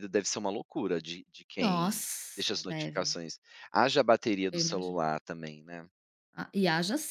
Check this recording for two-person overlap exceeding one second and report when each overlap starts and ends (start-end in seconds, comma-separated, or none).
1.6-3.2